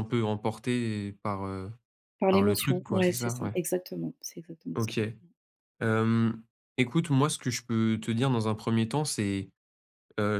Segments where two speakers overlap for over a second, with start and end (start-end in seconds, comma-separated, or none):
2.3-3.6